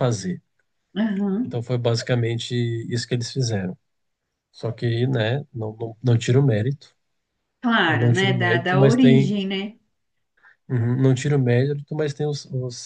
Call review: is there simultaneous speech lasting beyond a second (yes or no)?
yes